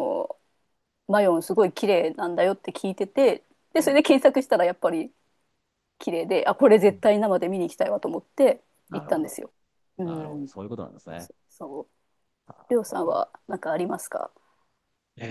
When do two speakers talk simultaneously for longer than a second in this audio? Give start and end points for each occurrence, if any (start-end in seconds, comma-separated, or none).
none